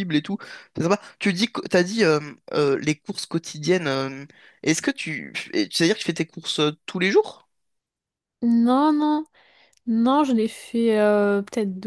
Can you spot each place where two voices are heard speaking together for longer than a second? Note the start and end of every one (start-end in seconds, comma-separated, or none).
none